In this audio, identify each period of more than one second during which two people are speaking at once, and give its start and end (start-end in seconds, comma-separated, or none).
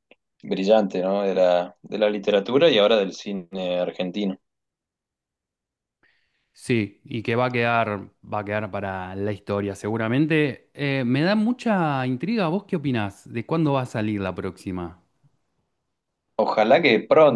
none